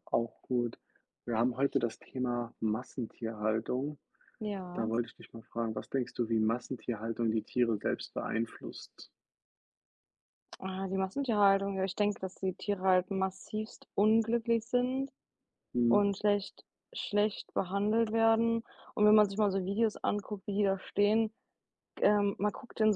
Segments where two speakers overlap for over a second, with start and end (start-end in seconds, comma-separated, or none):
none